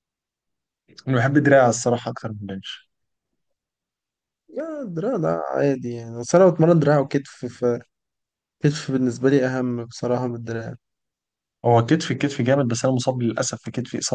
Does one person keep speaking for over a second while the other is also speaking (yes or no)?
no